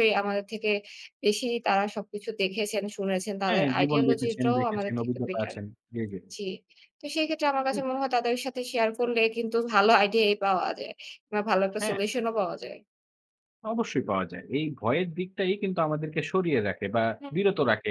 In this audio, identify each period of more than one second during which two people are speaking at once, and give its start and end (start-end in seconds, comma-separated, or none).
3.5-5.5